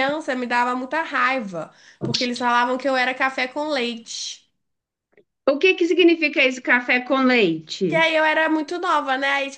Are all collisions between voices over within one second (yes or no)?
yes